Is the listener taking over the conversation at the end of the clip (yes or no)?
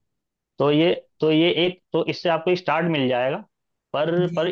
no